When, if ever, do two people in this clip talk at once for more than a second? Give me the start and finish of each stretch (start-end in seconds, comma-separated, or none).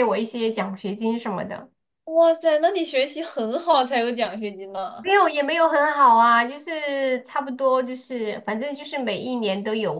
none